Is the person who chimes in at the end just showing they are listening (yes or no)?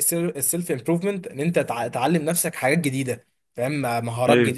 yes